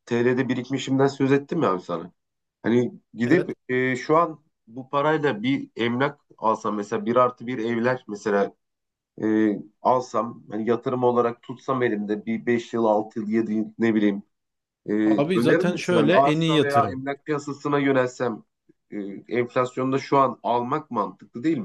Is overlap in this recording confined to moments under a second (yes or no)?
no